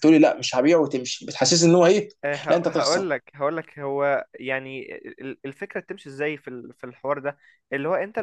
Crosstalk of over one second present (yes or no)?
no